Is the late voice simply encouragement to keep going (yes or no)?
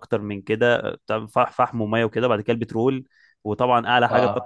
yes